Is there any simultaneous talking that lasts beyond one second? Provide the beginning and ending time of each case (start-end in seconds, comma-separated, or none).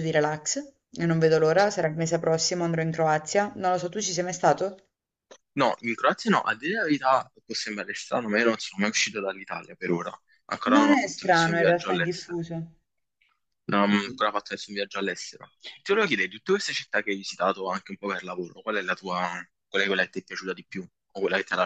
10.7-12.4